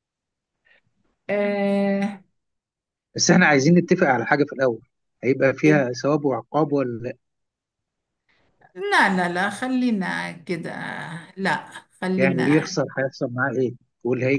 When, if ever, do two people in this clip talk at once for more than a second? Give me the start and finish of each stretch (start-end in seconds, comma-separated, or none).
none